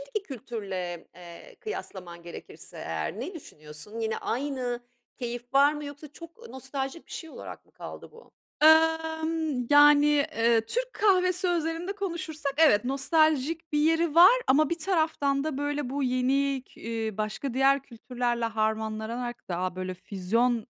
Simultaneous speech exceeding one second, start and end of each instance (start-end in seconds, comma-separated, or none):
none